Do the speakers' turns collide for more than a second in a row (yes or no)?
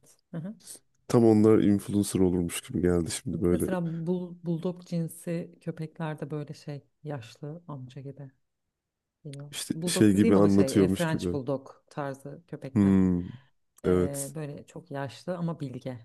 yes